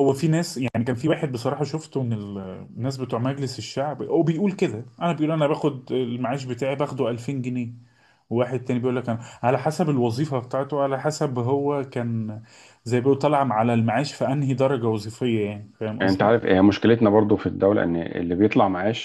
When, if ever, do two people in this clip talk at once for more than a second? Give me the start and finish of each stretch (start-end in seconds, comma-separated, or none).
none